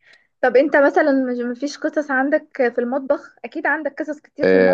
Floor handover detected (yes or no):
yes